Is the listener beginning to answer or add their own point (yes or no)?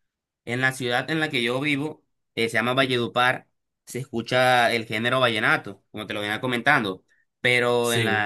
no